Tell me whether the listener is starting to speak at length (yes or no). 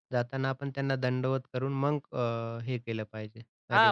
yes